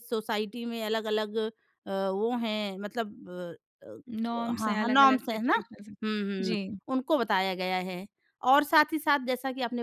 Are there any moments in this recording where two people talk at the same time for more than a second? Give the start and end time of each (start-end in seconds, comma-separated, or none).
4.2-5.5